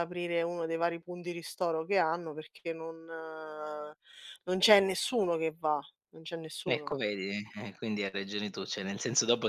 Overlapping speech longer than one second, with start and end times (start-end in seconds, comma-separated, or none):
none